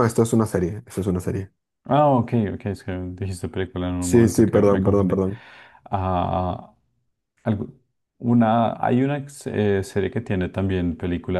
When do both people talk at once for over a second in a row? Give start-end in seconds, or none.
4.0-5.2